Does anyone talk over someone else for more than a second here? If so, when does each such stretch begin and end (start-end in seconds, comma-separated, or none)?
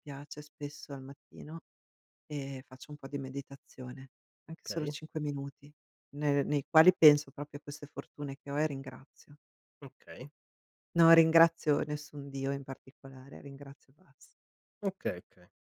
none